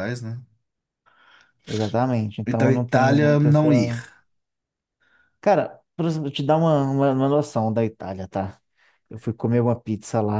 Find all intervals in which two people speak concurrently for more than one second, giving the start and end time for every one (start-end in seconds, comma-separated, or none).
2.5-4.0